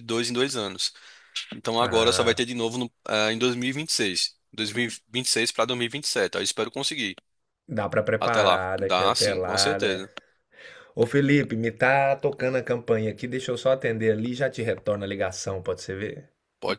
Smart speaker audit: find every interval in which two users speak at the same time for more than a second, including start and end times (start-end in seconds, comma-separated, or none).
8.2-10.1